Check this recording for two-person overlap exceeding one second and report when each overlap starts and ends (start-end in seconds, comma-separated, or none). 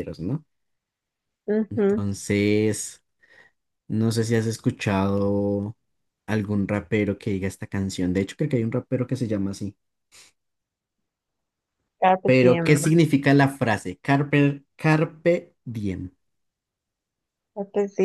none